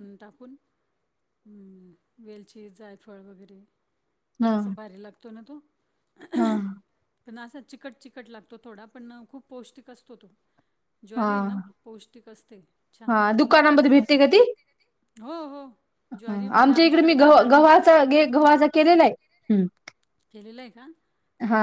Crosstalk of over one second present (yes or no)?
yes